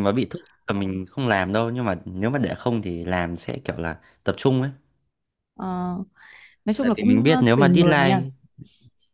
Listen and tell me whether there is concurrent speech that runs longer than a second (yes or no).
yes